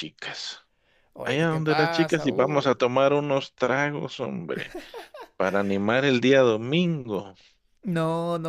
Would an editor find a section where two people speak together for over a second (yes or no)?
yes